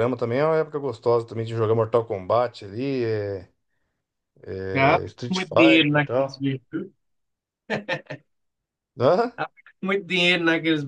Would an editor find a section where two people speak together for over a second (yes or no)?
yes